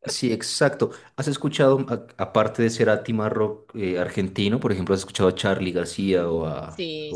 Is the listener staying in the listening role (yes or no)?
no